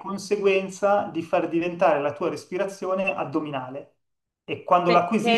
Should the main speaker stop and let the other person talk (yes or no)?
yes